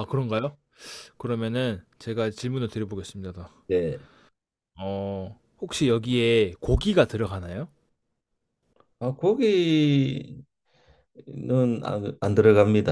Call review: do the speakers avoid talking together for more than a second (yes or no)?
yes